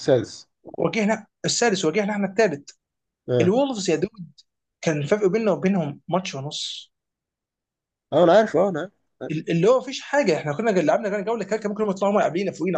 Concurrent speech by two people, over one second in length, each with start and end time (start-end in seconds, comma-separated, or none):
none